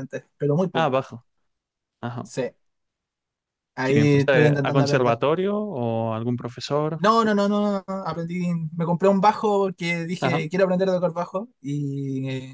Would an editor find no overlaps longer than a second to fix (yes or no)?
no